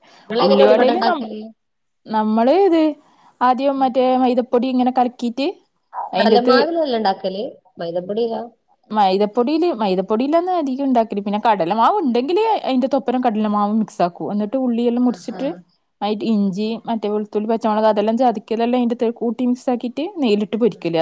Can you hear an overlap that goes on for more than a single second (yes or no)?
no